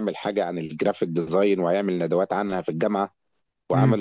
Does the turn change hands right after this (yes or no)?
no